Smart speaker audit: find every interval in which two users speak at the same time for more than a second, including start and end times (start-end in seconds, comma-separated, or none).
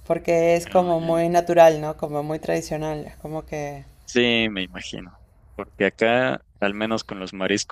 none